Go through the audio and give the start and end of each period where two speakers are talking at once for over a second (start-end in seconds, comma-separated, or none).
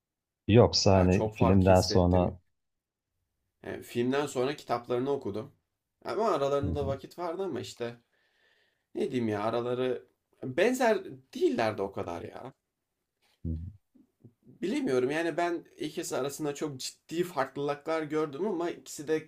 0.9-2.3